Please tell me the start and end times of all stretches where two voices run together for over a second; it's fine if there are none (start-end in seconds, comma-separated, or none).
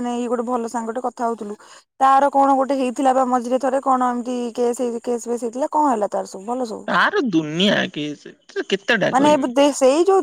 none